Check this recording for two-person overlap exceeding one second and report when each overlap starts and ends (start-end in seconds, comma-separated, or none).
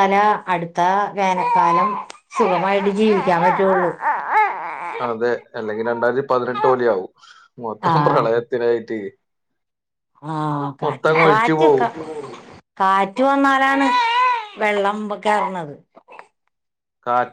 none